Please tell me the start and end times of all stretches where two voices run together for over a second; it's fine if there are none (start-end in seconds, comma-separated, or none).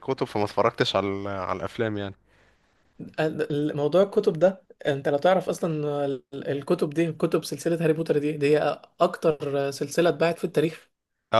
none